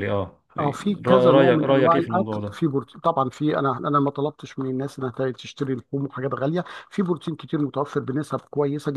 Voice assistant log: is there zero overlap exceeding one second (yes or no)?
no